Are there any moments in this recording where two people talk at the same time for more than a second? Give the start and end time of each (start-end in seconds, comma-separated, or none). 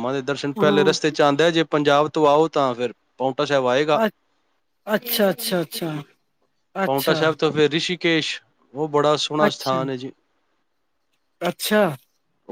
none